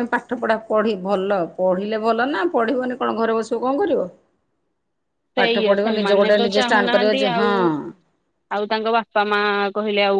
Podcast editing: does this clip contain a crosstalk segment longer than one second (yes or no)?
yes